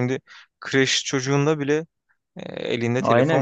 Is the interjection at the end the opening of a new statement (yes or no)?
yes